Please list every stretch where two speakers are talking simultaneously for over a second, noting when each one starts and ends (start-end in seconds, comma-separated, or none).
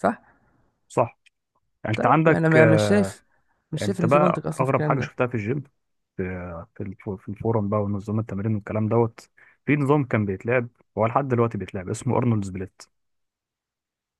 1.9-3.2, 3.8-5.2